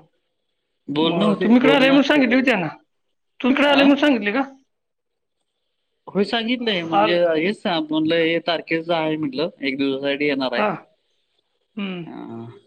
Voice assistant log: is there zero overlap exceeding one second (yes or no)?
no